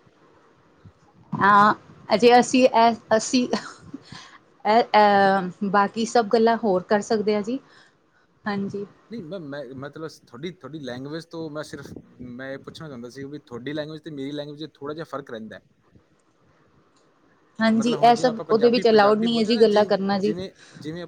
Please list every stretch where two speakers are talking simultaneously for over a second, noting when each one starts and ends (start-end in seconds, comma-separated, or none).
17.8-20.3